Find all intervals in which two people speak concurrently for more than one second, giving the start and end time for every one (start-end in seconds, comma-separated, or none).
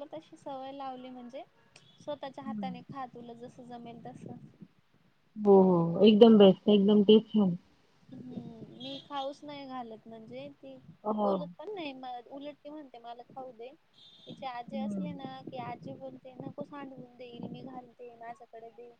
none